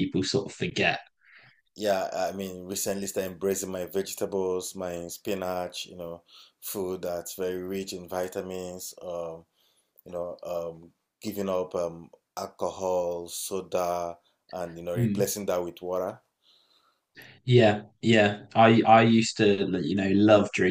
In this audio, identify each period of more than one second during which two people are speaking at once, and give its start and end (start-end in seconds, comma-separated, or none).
none